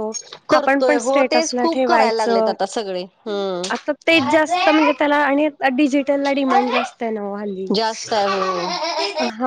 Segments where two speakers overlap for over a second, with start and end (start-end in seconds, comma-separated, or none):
0.6-2.5